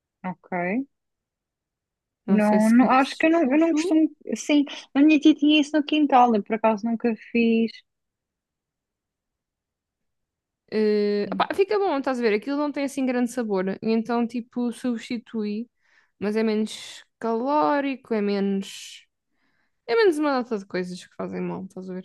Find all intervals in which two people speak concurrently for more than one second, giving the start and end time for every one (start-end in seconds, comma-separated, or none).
2.3-4.0